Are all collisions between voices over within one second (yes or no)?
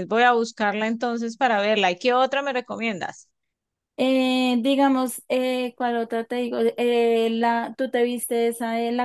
yes